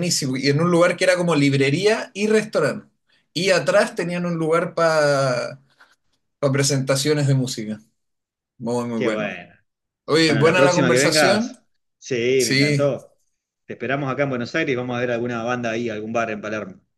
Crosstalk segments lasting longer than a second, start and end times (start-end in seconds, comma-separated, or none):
10.2-11.5